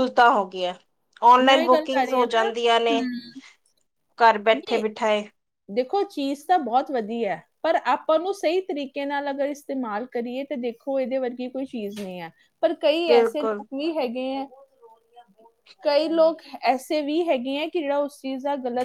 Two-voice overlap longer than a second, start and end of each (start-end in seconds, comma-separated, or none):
none